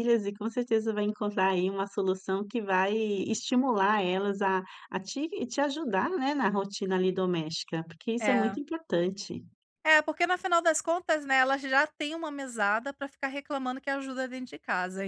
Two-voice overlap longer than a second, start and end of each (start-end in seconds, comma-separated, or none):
none